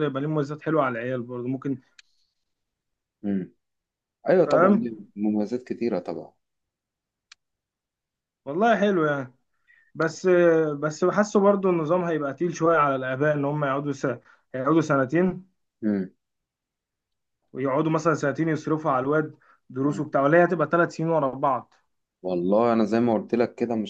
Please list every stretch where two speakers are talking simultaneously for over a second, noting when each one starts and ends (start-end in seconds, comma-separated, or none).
none